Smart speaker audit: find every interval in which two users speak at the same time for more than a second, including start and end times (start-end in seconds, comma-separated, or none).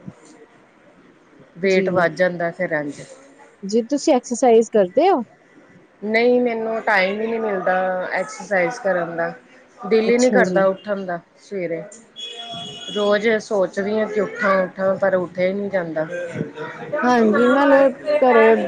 none